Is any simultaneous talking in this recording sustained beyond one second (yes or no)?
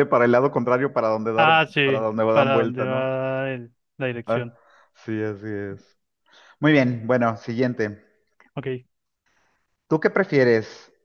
yes